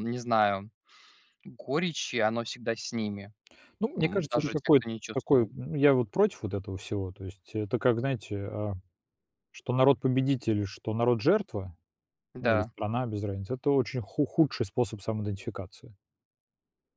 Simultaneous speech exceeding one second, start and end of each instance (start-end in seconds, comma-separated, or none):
4.0-5.5